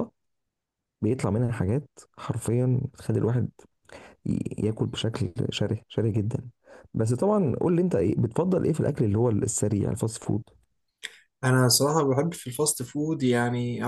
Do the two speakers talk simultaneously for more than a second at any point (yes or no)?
no